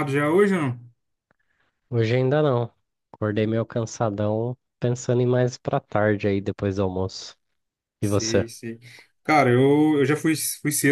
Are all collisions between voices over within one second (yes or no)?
yes